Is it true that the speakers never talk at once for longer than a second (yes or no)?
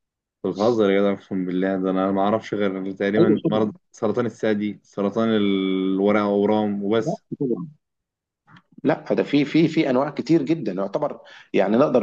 yes